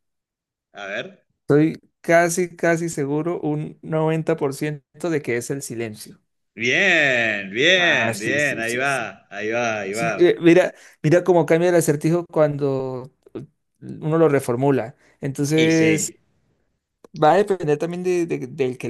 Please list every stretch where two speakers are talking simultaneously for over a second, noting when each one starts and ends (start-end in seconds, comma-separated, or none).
7.8-9.1